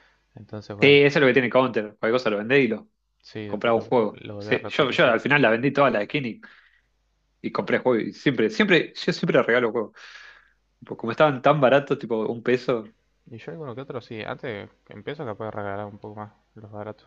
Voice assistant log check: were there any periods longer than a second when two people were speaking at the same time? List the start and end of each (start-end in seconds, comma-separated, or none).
3.5-5.2